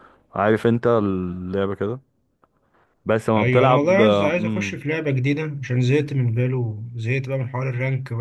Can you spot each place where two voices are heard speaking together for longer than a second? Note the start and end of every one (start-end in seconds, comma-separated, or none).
3.4-4.8